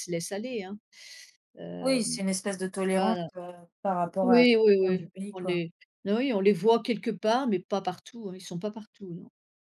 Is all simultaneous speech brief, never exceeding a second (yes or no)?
no